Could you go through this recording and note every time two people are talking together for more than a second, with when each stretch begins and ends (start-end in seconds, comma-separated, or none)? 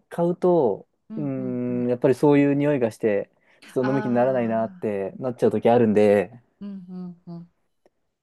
3.8-5.0